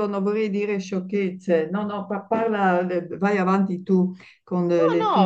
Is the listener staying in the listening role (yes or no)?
no